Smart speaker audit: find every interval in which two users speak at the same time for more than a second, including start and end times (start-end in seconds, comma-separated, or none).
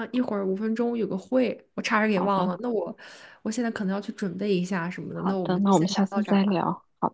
5.1-6.6